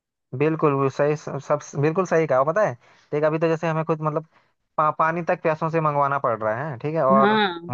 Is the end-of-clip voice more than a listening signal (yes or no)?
no